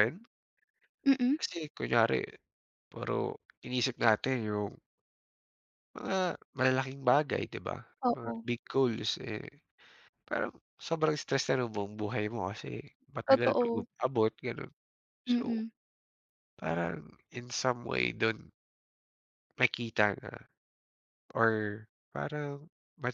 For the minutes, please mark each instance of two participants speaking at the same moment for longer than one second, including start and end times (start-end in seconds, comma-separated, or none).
none